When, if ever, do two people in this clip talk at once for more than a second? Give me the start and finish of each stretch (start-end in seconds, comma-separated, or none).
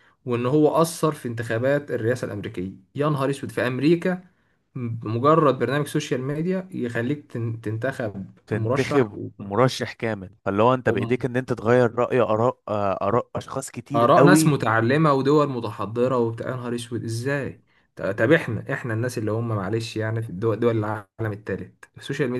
none